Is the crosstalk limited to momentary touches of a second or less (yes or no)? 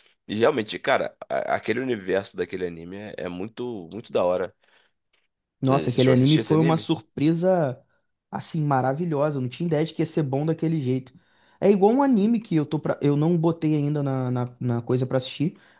no